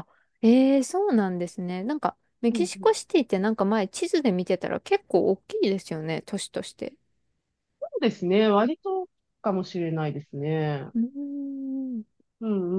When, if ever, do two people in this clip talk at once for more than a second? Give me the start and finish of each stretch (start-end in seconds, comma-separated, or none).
none